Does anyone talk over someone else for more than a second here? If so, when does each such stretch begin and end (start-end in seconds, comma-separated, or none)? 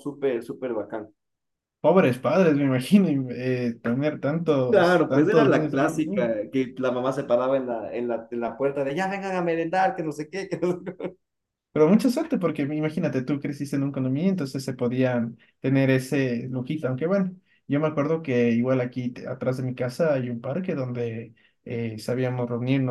4.7-6.3